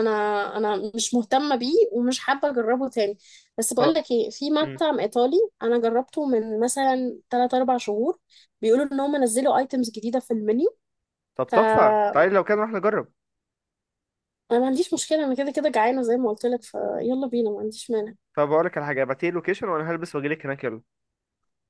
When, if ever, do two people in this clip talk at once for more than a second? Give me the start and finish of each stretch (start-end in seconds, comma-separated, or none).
none